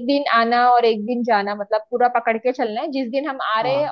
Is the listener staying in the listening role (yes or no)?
yes